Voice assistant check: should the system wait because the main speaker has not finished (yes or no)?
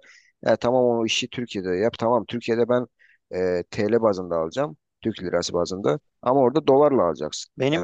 no